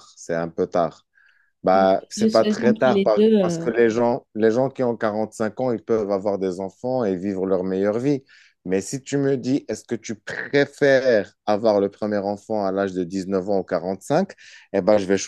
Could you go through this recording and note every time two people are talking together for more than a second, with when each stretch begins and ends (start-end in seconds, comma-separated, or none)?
1.7-3.6